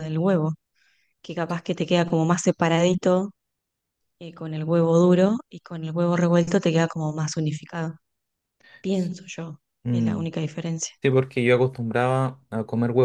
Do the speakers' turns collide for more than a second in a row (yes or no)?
no